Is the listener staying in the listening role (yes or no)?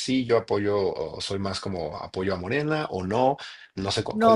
no